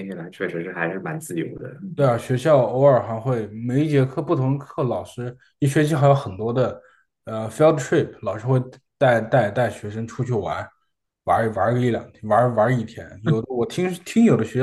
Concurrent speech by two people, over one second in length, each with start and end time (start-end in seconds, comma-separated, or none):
none